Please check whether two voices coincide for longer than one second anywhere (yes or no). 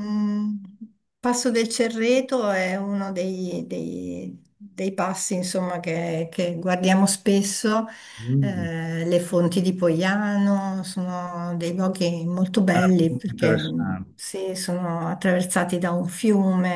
yes